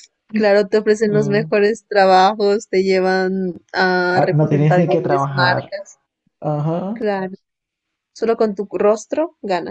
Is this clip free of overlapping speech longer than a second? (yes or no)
no